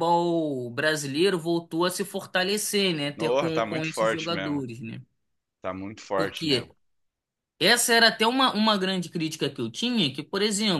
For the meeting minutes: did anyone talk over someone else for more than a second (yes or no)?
yes